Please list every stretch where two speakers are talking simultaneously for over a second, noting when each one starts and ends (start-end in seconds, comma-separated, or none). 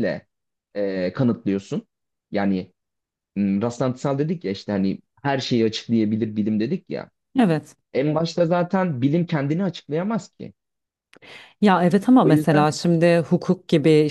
none